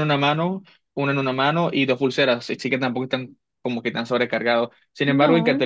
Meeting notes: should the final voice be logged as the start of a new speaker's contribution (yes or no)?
no